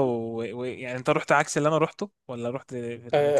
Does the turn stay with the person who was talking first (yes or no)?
no